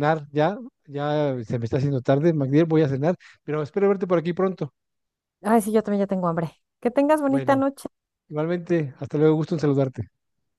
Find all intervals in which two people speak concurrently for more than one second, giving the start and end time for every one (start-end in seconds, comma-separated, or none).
none